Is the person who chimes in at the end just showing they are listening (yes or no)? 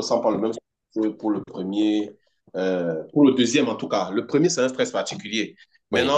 yes